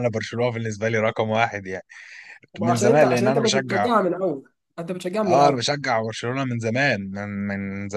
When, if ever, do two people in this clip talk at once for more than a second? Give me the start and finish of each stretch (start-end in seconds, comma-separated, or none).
2.6-3.9